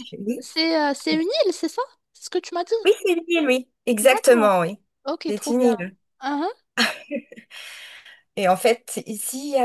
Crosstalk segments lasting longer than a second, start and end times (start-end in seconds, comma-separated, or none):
none